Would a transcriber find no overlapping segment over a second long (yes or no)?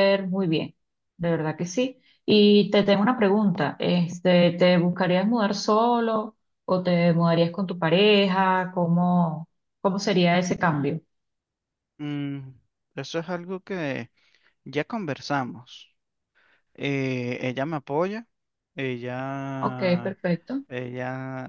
yes